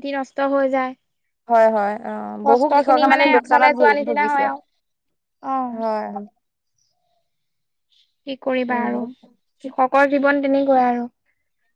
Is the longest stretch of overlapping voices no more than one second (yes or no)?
no